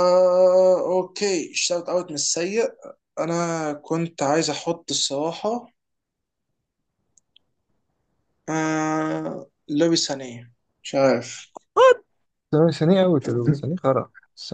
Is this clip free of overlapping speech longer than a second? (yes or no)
yes